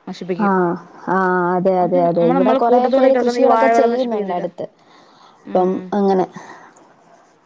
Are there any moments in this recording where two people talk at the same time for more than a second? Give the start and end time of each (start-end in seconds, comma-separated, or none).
1.8-4.5